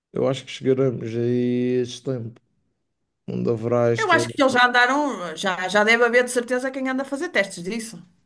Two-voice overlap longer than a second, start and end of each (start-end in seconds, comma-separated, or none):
none